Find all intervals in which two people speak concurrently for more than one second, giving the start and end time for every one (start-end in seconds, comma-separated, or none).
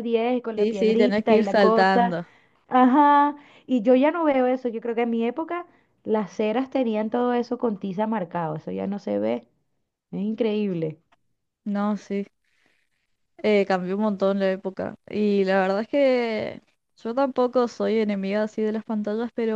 0.5-2.2